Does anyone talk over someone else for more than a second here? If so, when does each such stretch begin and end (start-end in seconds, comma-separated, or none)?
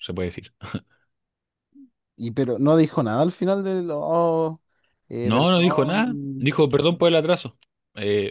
5.2-6.6